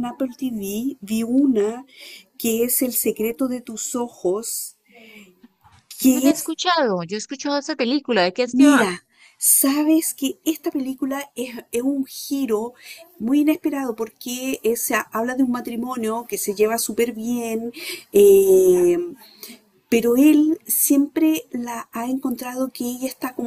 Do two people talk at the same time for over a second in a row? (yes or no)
no